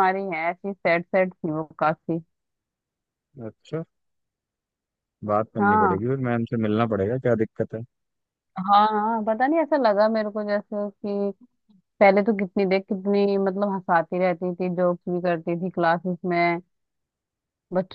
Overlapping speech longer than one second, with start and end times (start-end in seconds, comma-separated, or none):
none